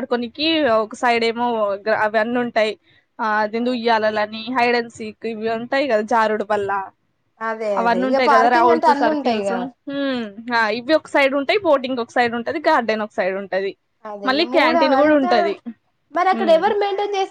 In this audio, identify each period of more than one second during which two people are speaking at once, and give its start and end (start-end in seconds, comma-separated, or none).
7.8-9.5